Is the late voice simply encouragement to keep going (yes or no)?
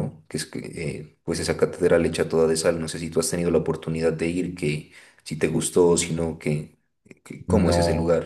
no